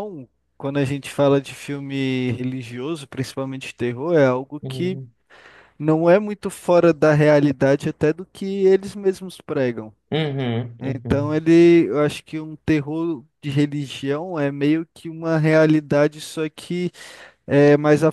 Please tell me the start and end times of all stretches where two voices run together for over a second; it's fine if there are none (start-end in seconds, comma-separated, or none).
none